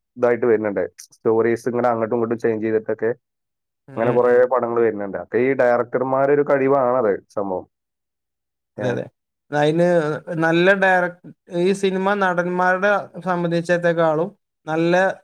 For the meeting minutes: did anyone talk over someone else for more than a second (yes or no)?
no